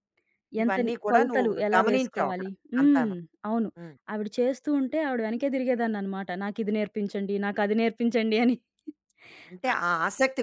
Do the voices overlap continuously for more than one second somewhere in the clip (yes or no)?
yes